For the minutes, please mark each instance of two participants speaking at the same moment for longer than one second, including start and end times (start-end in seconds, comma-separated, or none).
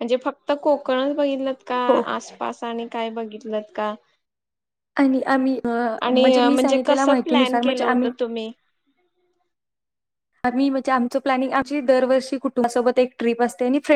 6.1-8.1